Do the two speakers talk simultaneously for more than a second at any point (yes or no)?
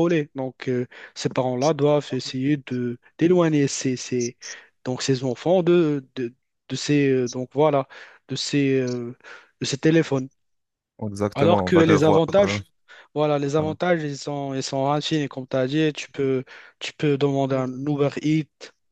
yes